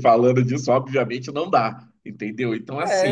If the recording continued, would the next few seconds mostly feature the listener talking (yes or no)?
yes